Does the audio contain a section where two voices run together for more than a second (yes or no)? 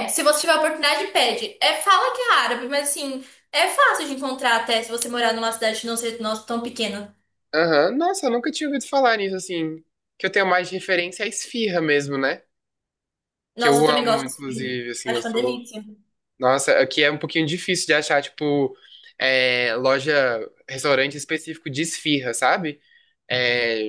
yes